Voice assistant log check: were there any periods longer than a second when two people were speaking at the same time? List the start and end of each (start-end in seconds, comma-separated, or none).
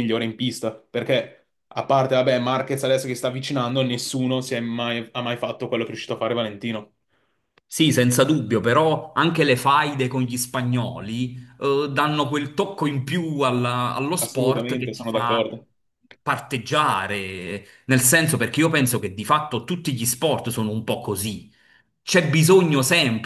14.2-15.5